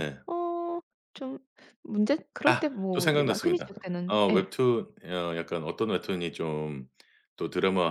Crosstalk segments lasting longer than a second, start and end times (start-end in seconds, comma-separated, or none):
2.5-4.5